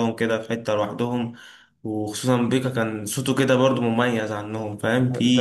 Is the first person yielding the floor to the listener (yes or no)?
yes